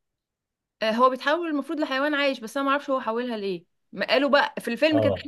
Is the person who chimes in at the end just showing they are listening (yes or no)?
yes